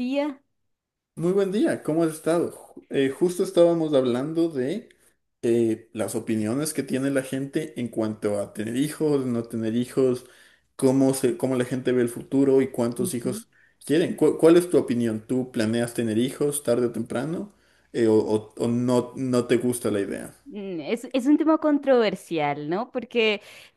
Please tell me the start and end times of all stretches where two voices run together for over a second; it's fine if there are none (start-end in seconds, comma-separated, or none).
none